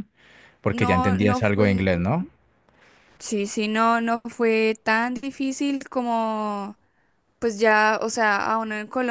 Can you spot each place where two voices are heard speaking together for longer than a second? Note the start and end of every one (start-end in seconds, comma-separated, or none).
0.7-1.9